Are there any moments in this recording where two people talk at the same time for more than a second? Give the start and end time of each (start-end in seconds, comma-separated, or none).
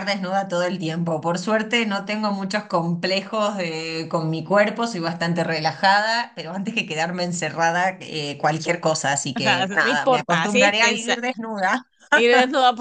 9.3-11.2